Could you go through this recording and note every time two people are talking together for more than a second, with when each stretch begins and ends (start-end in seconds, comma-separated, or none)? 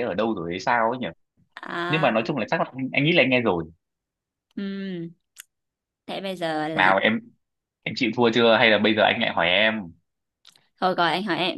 none